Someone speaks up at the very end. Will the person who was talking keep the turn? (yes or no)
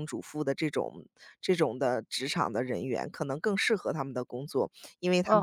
no